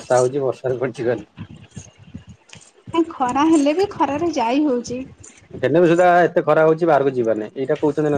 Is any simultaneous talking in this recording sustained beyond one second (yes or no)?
no